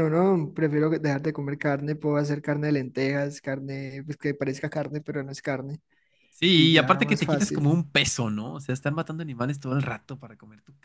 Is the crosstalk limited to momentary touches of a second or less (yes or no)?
no